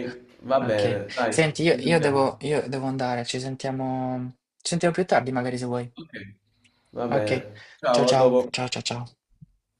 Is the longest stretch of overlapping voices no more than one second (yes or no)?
no